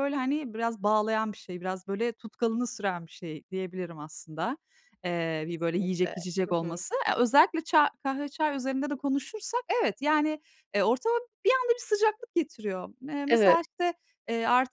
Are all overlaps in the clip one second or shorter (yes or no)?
no